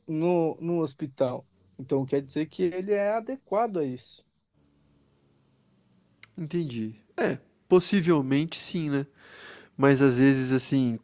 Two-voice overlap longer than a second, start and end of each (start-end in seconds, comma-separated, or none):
none